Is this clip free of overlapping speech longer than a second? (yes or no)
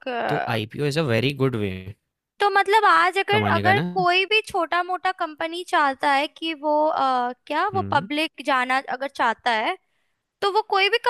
yes